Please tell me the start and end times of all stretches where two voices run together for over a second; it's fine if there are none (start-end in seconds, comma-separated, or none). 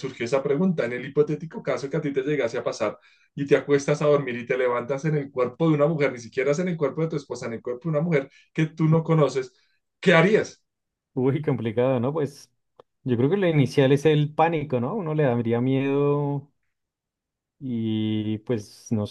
none